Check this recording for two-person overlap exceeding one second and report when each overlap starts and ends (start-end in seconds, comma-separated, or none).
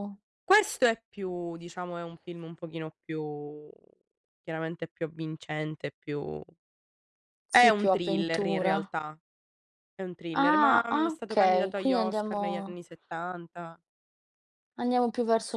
7.5-8.9, 10.3-12.8